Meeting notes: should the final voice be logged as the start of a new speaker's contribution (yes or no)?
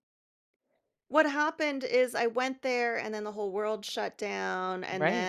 no